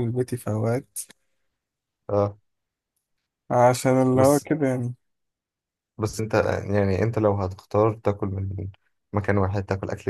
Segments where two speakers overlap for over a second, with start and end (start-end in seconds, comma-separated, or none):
none